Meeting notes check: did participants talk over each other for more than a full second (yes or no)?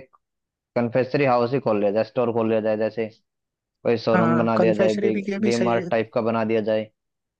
yes